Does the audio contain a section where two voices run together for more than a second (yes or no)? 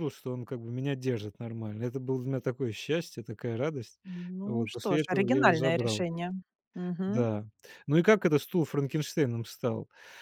yes